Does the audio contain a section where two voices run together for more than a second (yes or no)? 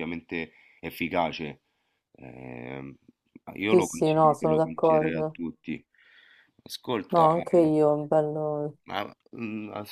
yes